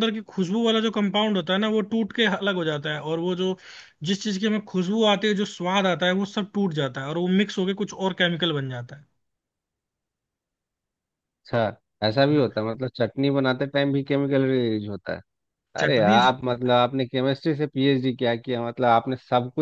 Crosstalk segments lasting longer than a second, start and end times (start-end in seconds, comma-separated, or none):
none